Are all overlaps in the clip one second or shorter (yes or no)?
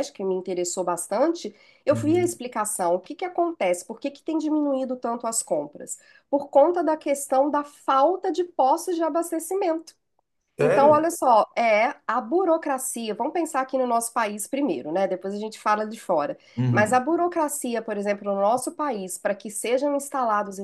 yes